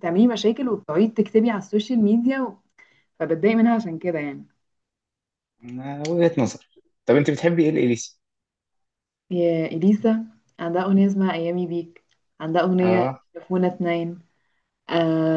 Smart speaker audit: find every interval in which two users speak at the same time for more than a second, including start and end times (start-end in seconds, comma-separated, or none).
none